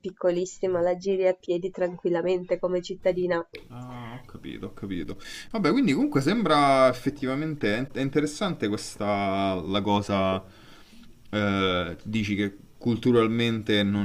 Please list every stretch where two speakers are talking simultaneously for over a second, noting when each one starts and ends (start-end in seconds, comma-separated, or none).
none